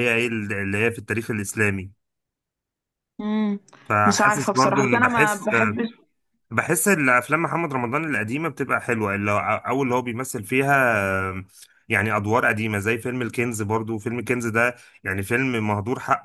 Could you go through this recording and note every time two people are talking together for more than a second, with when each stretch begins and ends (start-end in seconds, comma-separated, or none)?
4.0-5.5